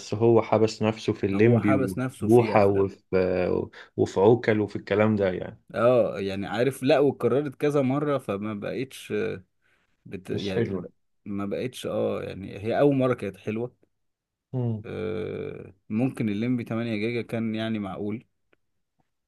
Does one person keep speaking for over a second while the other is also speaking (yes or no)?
yes